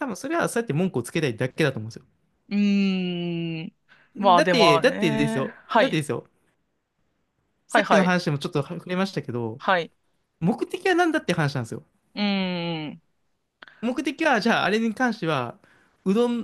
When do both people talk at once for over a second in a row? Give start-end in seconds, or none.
4.3-6.0